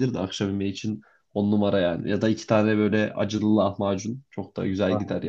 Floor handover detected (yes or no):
yes